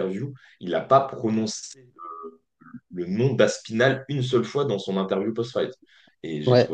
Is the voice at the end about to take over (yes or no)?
no